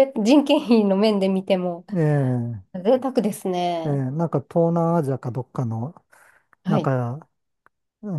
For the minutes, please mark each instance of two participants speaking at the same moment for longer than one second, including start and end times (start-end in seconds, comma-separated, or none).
none